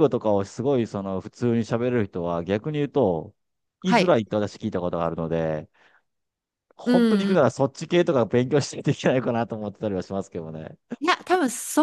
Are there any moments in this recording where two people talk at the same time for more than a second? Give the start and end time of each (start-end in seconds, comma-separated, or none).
none